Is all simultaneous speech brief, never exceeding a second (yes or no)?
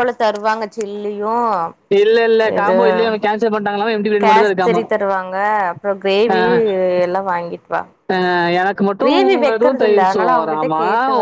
no